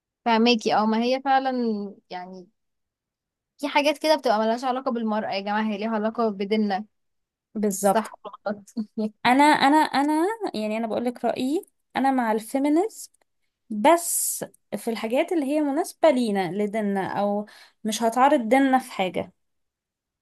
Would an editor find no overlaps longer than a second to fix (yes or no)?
yes